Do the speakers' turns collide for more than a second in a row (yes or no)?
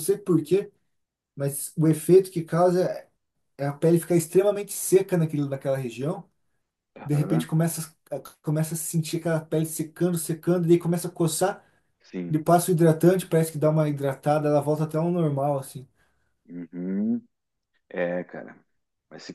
no